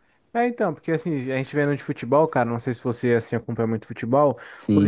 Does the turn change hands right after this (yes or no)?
no